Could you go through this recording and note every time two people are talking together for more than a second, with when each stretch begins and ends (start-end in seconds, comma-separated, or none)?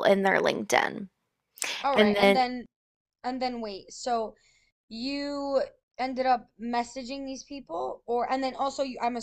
none